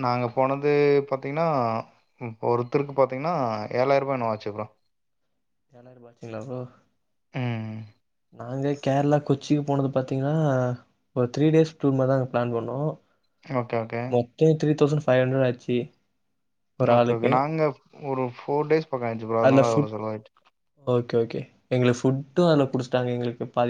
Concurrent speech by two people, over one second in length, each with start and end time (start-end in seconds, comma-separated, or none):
none